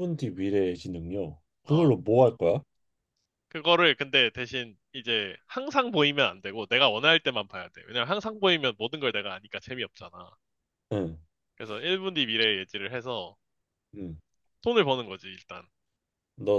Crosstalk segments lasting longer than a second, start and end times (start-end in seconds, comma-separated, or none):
none